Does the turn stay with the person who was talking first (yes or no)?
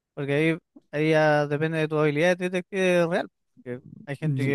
yes